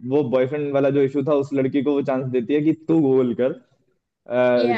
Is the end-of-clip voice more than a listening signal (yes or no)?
no